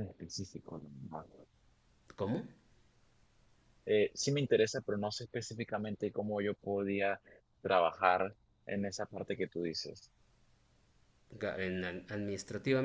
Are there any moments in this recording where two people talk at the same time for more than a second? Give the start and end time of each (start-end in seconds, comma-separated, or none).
none